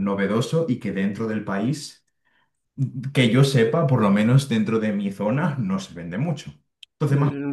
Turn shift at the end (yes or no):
yes